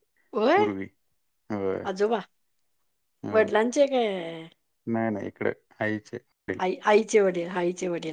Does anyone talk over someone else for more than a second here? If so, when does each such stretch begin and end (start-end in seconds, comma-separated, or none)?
none